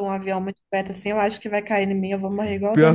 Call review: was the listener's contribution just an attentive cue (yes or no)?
no